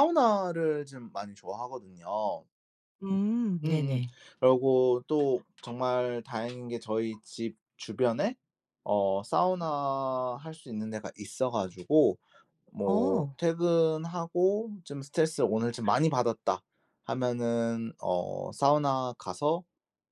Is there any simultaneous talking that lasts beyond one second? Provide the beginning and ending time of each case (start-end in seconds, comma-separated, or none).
none